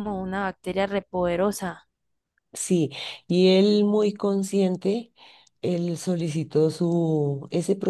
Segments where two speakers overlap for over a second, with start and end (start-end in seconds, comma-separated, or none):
none